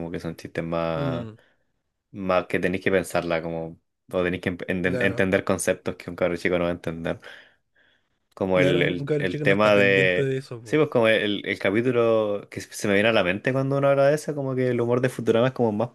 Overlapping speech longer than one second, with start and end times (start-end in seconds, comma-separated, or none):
8.5-10.8